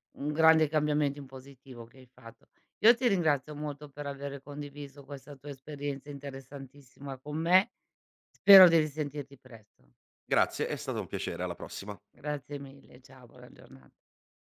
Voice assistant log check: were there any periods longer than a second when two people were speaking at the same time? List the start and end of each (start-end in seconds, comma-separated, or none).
none